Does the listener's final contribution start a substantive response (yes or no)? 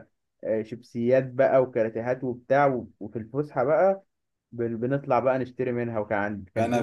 yes